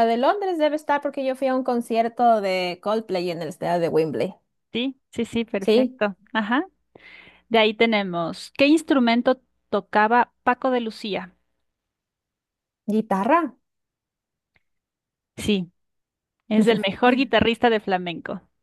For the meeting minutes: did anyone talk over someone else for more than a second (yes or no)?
no